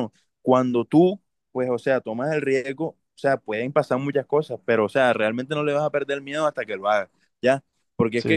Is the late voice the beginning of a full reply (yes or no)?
no